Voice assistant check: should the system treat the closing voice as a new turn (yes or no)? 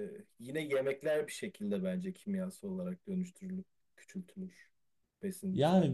yes